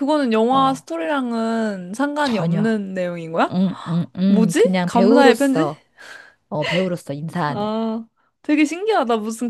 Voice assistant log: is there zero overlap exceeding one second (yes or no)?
no